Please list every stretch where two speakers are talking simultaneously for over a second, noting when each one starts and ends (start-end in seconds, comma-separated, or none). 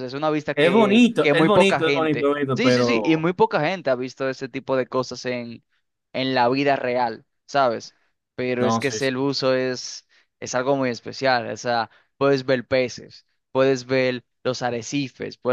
0.5-3.3